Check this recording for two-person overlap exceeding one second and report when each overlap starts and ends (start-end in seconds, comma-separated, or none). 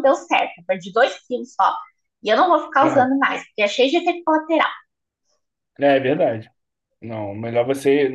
none